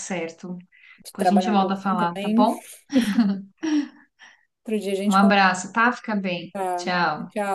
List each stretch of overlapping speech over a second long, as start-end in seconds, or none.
1.2-2.5